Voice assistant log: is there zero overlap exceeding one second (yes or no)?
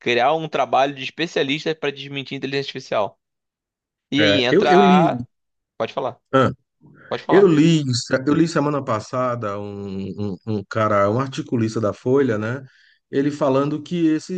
yes